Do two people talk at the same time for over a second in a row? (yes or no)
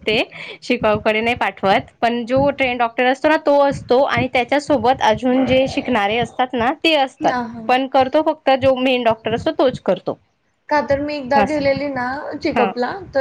no